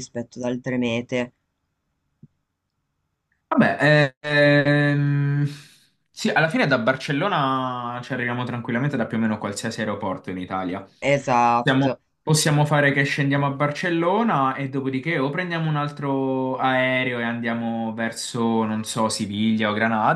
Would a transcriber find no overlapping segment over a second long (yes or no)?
yes